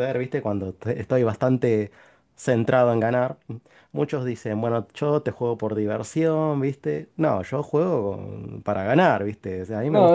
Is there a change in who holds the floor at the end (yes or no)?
yes